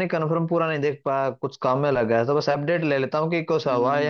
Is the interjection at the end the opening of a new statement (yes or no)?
yes